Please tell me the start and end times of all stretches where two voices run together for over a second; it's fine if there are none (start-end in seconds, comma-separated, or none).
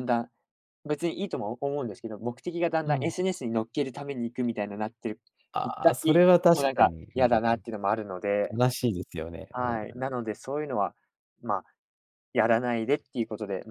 5.6-7.6